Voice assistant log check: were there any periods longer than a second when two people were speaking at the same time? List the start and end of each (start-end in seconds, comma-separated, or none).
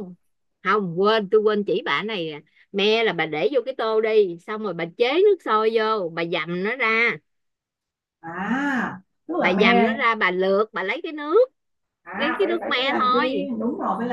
12.2-13.5